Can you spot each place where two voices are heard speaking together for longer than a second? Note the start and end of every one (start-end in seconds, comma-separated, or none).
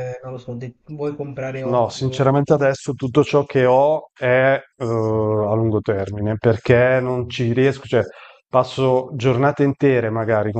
none